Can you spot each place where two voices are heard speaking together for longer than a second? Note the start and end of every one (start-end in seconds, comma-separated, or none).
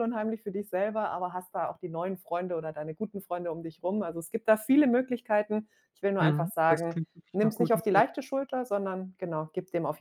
6.2-8.1